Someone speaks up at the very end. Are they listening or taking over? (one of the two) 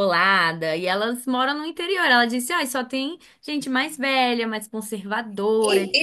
taking over